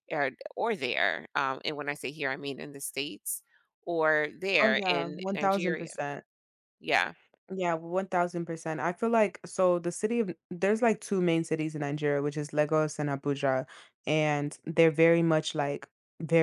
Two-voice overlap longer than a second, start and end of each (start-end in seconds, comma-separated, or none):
4.6-5.9